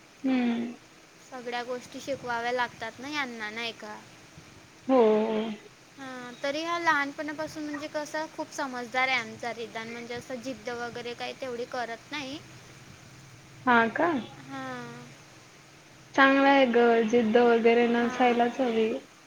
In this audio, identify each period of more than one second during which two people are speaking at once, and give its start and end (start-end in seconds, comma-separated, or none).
none